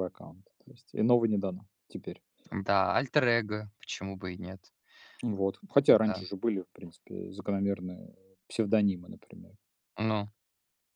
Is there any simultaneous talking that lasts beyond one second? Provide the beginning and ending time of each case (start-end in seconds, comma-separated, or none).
none